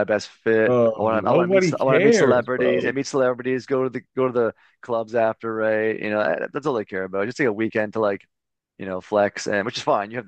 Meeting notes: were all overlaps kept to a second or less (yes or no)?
no